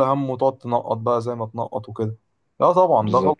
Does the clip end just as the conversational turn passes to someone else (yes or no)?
no